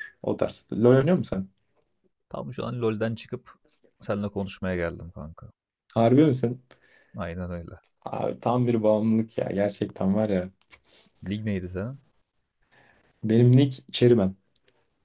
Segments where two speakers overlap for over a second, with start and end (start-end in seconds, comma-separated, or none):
none